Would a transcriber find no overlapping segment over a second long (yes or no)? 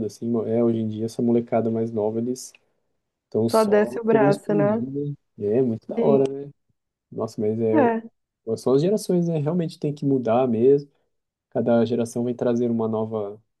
no